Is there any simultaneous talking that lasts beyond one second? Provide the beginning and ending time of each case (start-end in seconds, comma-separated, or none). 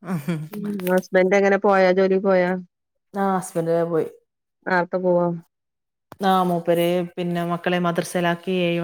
none